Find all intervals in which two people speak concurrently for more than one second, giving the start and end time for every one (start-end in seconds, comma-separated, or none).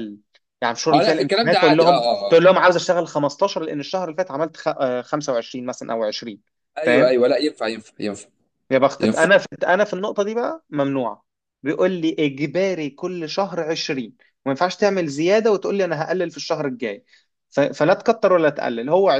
0.9-2.5